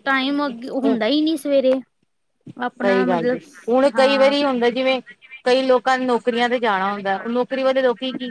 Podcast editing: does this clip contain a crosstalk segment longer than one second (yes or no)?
yes